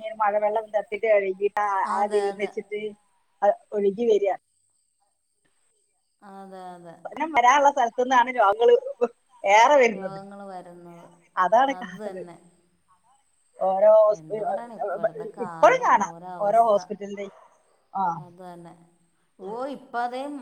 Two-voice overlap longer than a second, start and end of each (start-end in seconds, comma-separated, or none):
none